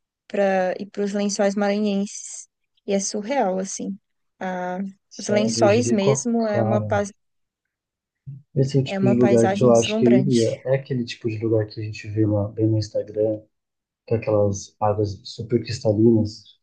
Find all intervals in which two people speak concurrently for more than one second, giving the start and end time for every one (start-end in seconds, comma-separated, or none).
5.2-7.1, 8.8-10.6